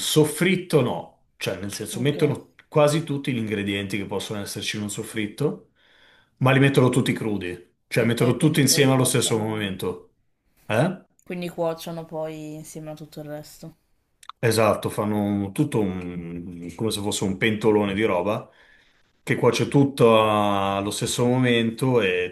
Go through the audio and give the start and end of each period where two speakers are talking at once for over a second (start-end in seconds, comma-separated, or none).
8.1-9.7